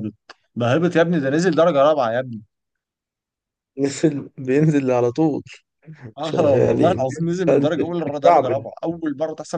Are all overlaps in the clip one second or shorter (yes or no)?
no